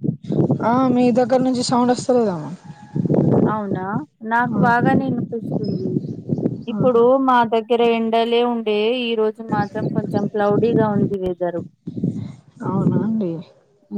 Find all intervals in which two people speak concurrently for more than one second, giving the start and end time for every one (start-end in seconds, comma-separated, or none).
none